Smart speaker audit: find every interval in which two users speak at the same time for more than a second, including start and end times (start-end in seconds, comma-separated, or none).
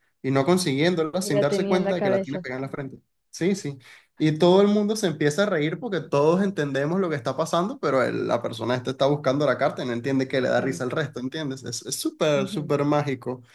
1.2-2.5